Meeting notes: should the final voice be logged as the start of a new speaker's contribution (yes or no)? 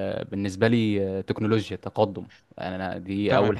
yes